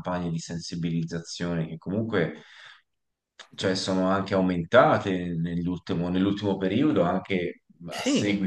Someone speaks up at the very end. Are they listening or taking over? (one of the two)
listening